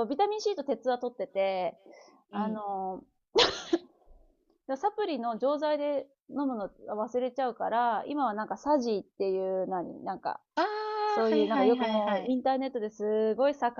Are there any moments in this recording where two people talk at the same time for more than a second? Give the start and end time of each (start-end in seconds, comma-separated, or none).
11.1-12.4